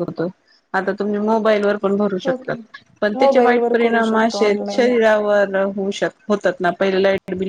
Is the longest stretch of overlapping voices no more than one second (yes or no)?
no